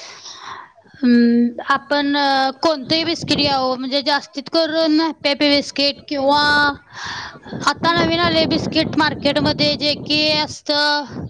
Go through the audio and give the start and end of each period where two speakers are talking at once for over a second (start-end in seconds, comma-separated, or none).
2.6-6.7